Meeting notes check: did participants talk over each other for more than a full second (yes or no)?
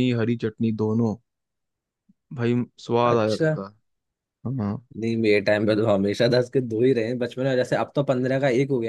no